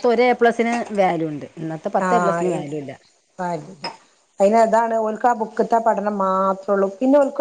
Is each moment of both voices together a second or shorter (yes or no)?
yes